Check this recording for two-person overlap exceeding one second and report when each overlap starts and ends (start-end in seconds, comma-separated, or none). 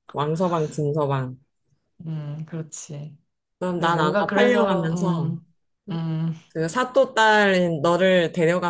3.8-5.4